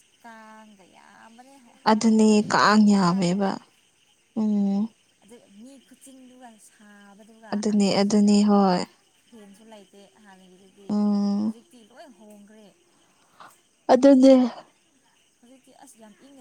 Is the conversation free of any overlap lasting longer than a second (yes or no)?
no